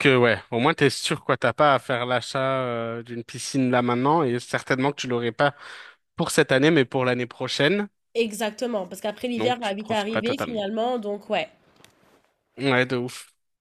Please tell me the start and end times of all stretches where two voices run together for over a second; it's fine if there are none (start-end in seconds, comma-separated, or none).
9.4-10.6